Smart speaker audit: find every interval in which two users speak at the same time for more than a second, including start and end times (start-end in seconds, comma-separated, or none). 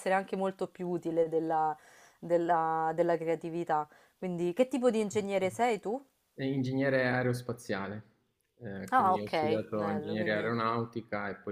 8.9-10.6